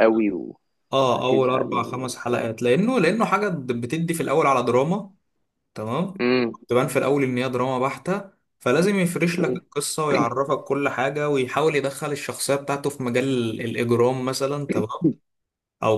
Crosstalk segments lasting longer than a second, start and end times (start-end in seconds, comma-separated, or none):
1.0-2.5